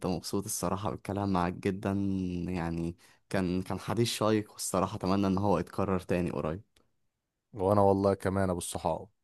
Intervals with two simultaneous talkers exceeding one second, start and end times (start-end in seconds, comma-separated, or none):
none